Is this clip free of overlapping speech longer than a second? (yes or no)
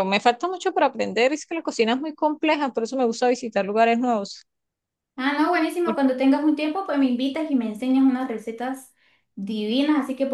yes